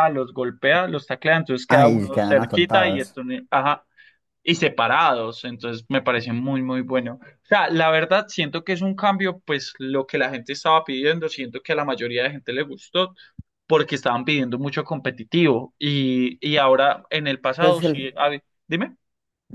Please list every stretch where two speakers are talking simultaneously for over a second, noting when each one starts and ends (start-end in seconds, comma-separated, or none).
1.7-3.2